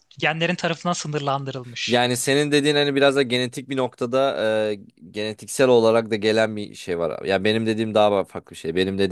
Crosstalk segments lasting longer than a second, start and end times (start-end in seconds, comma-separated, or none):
none